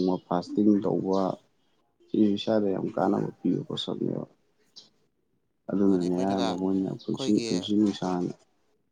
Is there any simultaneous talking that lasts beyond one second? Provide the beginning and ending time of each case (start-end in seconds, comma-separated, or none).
5.8-7.5